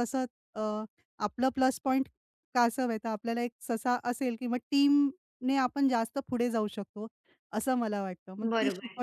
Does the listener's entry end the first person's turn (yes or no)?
no